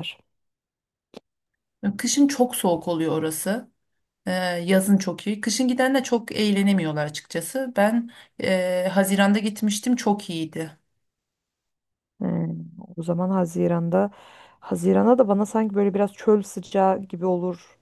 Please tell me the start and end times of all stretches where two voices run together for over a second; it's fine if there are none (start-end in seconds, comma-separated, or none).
none